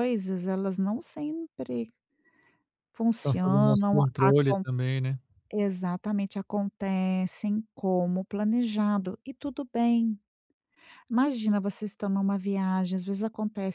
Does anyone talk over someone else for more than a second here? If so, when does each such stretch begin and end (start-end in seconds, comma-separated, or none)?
3.2-4.6